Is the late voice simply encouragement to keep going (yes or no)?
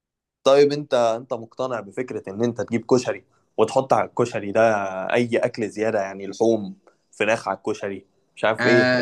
no